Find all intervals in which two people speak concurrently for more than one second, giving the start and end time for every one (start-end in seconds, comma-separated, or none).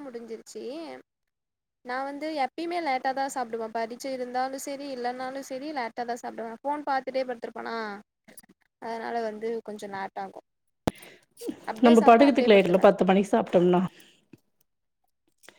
none